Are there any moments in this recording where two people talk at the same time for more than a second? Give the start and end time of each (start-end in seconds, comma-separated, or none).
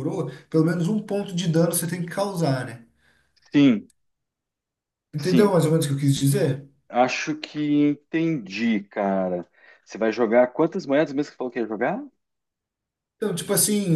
none